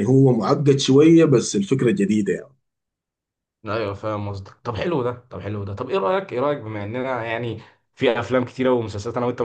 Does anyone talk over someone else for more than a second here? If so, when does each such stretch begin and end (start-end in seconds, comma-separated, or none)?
none